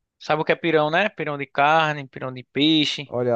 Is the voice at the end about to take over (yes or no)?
yes